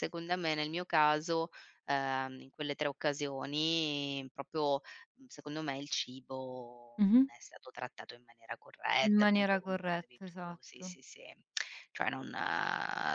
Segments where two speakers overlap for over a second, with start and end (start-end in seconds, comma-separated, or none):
9.0-11.0